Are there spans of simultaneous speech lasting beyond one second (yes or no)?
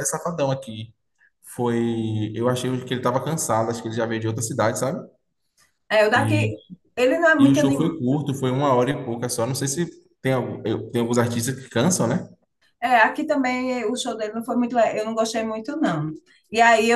no